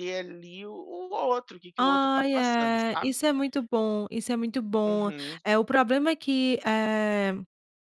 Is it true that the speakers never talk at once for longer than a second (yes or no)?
no